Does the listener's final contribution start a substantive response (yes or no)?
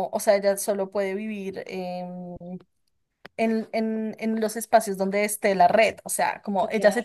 no